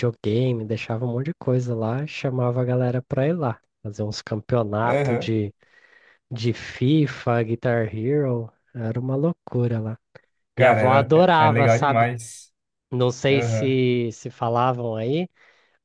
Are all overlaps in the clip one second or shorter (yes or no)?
no